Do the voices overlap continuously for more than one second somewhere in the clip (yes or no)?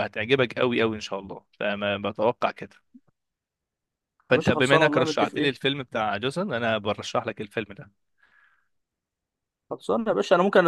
yes